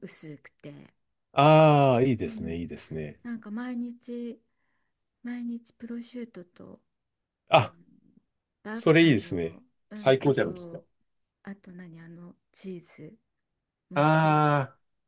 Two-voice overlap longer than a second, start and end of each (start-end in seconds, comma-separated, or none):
8.7-10.8